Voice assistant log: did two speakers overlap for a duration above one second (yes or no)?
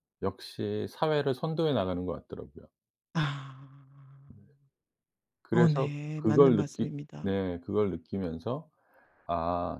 yes